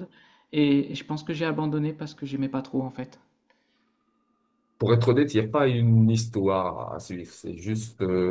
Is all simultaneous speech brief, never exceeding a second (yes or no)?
yes